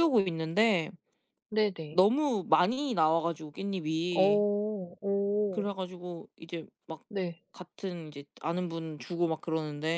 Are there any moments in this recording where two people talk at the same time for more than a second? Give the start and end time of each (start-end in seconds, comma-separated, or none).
none